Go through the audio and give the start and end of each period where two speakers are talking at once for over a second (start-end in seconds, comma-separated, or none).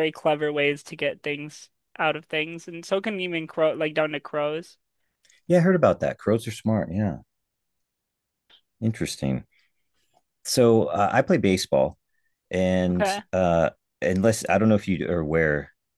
none